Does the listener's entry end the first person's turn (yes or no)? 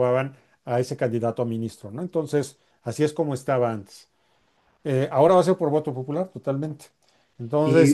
no